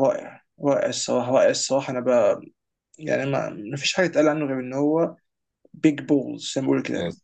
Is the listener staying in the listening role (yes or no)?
no